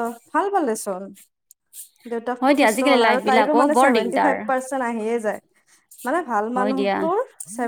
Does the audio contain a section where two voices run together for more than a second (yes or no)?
yes